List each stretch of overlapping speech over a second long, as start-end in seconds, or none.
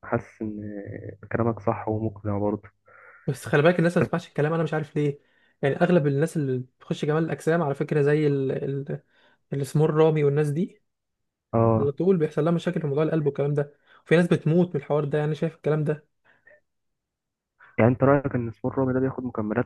none